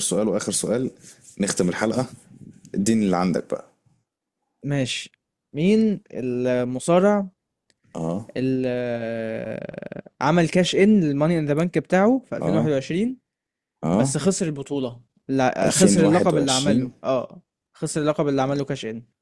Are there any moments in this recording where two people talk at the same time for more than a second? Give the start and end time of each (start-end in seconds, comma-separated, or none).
15.6-16.9